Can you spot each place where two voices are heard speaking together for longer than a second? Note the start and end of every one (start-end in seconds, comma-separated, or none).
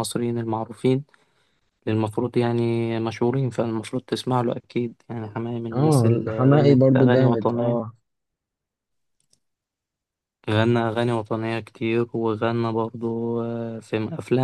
5.7-7.8